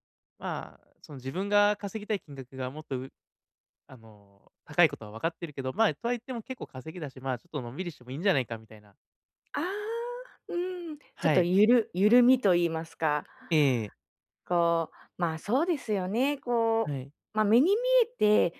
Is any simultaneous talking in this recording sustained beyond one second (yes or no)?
no